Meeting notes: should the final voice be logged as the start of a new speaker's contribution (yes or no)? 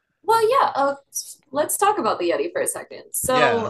yes